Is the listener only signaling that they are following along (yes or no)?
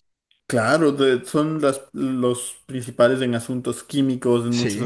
yes